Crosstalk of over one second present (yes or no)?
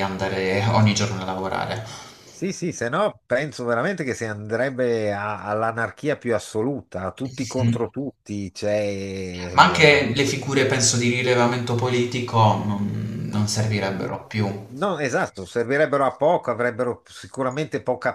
no